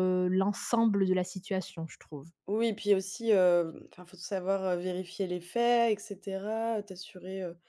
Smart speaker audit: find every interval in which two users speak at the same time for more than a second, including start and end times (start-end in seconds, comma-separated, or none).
none